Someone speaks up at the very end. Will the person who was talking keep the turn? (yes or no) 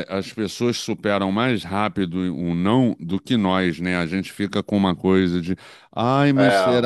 yes